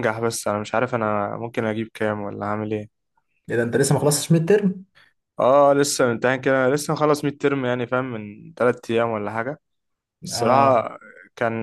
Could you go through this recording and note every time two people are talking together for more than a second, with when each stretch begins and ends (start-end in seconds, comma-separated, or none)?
none